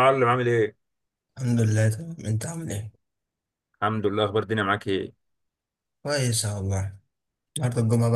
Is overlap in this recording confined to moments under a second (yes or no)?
yes